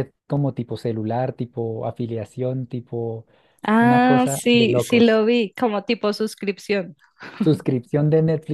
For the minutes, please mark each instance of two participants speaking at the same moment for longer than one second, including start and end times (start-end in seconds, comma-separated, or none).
3.8-5.2